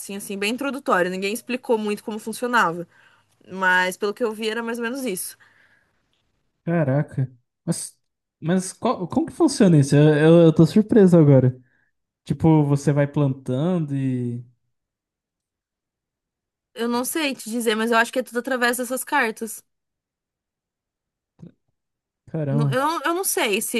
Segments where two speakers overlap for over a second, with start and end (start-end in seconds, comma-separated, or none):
none